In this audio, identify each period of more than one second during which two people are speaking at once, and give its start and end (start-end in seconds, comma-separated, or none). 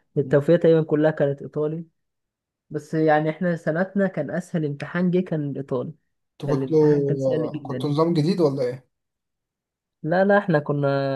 6.5-7.9